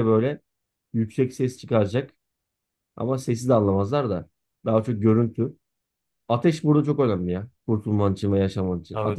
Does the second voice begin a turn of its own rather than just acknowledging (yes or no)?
yes